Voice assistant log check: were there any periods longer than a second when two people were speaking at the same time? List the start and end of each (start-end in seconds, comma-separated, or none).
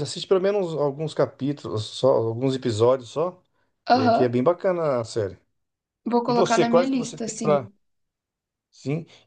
6.3-7.7